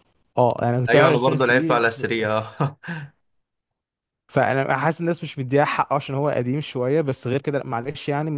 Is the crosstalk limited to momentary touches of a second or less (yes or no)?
no